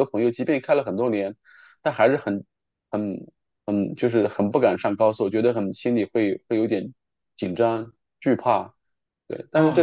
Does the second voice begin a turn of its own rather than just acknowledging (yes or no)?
yes